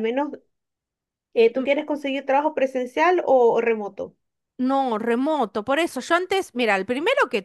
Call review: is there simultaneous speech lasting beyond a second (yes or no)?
no